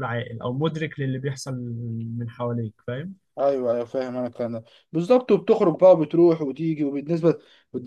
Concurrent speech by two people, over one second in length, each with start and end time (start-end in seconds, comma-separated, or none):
none